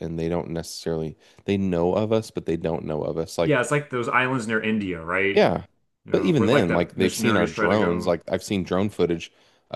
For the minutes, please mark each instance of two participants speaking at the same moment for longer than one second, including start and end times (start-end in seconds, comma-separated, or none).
6.1-8.1